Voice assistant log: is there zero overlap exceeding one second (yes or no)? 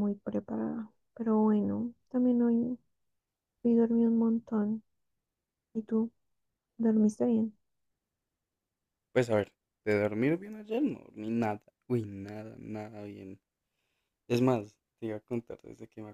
yes